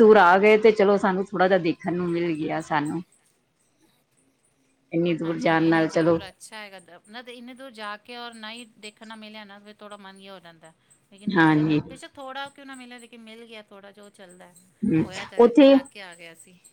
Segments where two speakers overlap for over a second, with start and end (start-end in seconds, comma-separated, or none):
none